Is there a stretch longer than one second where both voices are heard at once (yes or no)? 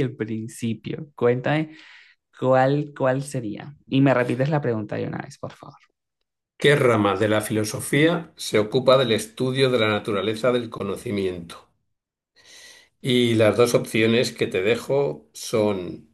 no